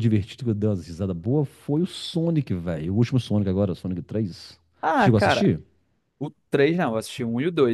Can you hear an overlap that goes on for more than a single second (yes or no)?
no